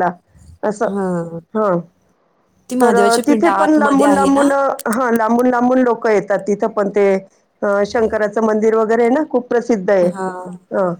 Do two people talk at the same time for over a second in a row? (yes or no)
yes